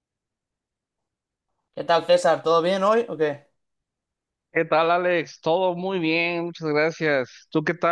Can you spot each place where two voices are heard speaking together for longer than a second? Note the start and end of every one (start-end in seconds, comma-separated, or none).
none